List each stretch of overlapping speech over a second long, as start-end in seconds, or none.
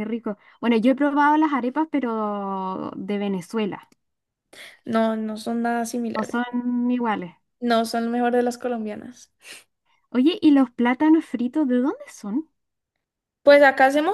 none